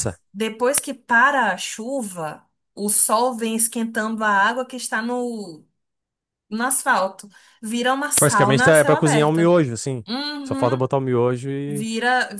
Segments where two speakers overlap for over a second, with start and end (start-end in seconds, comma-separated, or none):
8.2-9.5